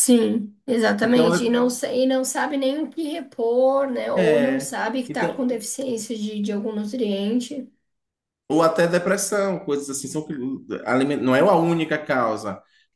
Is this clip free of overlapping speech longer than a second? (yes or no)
no